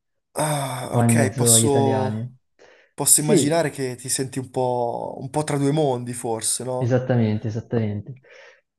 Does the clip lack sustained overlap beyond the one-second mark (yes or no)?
no